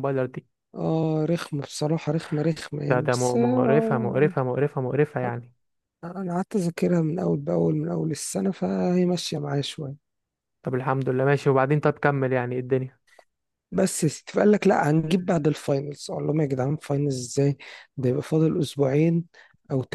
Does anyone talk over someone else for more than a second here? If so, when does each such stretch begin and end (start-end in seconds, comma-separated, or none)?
2.8-4.3